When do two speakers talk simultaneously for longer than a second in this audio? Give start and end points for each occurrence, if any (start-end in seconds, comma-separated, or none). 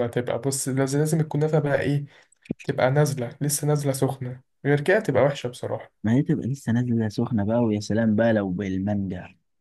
none